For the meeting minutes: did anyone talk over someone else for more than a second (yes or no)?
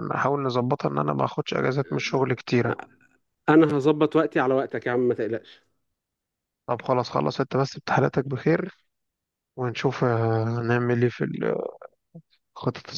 no